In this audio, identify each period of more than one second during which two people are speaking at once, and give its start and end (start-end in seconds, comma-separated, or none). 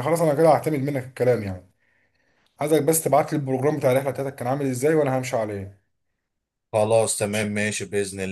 none